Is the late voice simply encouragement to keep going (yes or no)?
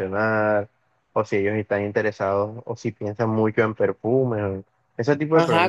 no